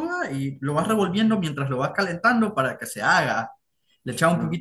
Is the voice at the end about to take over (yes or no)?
no